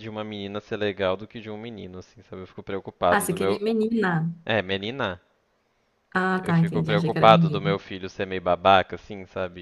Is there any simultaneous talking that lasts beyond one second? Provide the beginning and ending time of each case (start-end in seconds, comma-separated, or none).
6.4-7.8